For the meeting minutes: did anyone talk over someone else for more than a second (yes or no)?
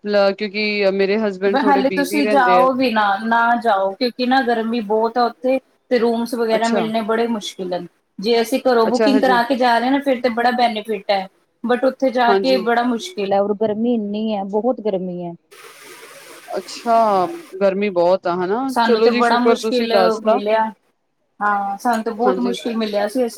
yes